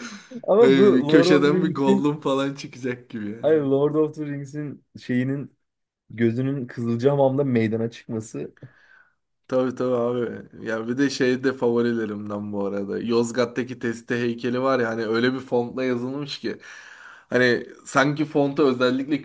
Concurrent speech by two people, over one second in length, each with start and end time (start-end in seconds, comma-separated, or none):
0.6-2.1